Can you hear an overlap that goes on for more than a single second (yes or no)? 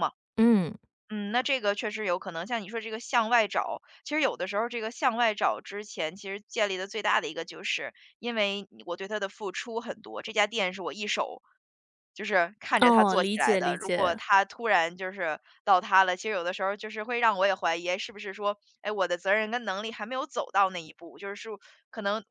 yes